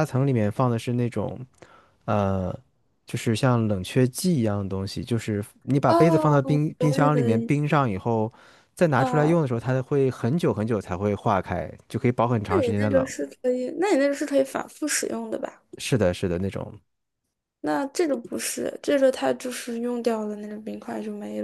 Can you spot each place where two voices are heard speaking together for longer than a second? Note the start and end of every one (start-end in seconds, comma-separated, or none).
5.9-7.5